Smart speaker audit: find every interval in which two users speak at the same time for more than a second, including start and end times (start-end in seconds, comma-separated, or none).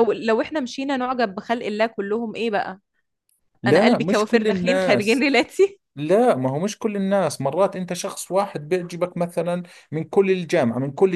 3.6-5.3